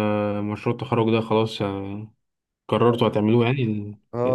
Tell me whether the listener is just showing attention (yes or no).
no